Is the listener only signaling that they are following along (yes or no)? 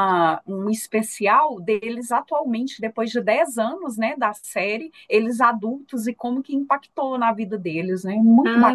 no